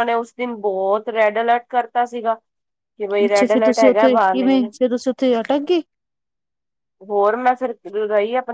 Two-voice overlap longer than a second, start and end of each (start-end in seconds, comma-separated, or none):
3.2-4.5